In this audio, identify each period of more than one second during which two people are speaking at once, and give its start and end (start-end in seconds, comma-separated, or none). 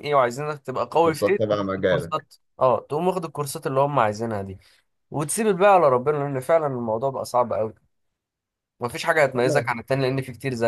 1.0-2.3